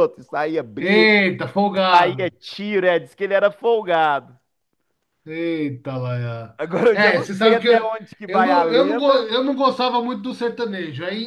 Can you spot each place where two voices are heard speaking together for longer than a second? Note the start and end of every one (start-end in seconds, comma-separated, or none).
6.9-9.3